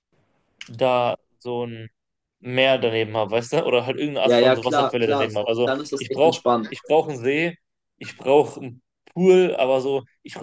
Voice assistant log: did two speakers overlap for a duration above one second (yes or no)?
yes